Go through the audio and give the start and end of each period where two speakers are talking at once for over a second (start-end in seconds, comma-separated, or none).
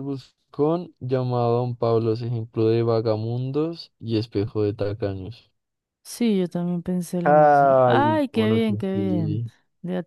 7.2-9.5